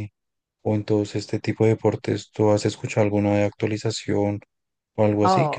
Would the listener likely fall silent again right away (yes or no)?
no